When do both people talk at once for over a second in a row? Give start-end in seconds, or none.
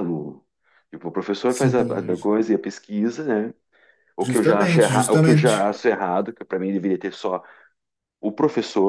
4.2-5.7